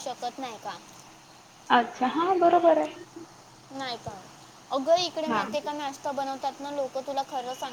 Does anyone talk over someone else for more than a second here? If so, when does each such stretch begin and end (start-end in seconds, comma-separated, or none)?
none